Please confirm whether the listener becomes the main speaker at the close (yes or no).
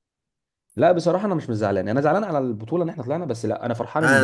yes